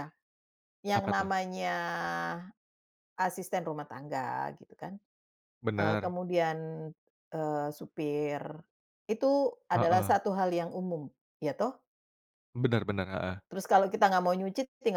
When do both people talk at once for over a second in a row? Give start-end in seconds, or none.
none